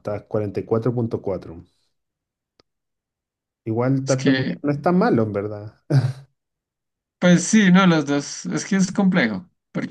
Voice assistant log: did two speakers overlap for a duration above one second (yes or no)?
no